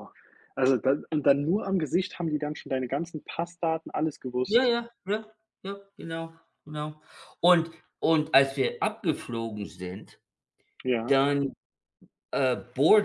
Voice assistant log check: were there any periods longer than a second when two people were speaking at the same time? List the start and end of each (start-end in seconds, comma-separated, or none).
none